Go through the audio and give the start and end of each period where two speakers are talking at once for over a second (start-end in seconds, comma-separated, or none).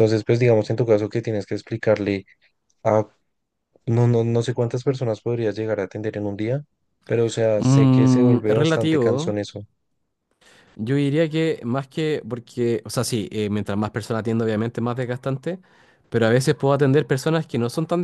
7.5-9.3